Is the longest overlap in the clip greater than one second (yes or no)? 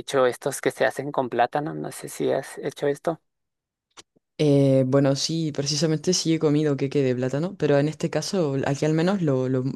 no